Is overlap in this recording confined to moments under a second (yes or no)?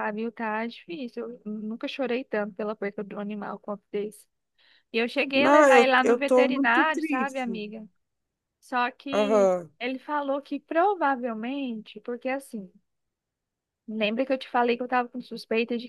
no